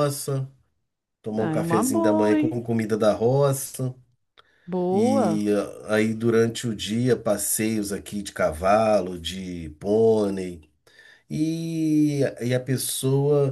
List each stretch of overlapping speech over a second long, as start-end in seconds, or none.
1.4-2.6